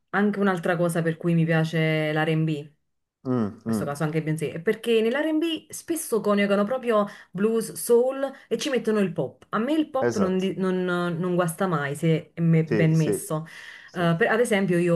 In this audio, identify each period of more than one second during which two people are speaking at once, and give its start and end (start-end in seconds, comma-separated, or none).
none